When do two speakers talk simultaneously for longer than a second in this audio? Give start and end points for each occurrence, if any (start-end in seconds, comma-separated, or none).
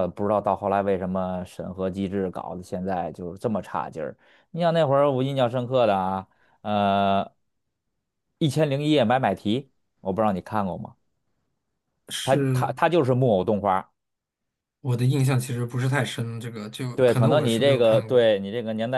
16.9-18.3